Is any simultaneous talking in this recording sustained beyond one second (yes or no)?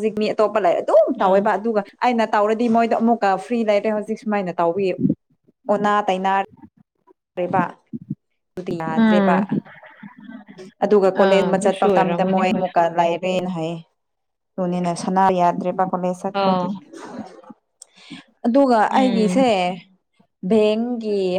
yes